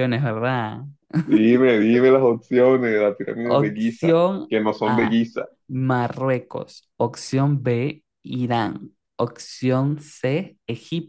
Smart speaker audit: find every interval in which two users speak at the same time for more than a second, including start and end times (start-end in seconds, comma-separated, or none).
3.4-5.1